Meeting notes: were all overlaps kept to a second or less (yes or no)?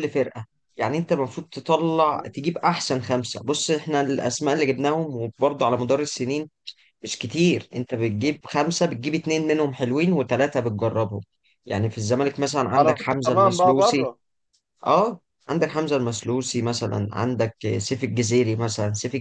no